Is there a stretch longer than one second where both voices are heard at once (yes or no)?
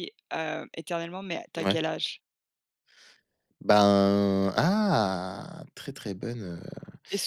no